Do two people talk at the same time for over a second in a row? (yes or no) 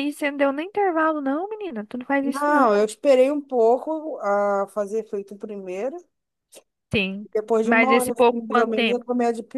yes